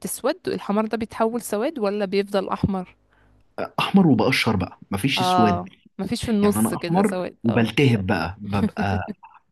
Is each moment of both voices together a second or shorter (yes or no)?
no